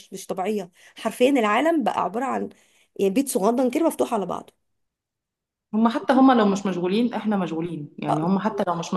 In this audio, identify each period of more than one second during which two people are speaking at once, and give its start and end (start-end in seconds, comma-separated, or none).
none